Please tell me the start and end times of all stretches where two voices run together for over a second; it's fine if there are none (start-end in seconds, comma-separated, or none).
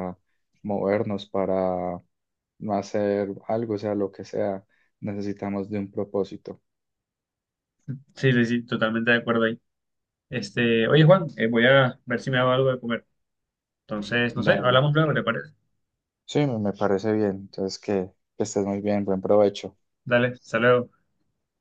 none